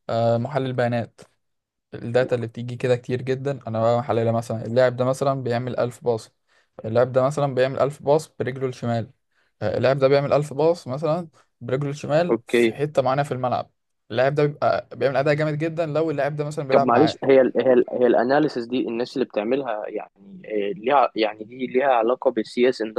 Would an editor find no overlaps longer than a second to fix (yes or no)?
yes